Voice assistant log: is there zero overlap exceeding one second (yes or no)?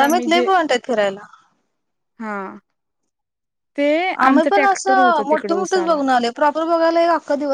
no